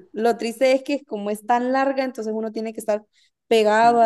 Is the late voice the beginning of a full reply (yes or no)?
yes